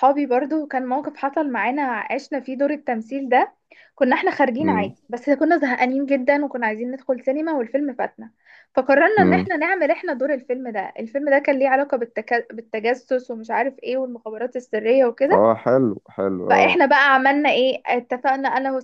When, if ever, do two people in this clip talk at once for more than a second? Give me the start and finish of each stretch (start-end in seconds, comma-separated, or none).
none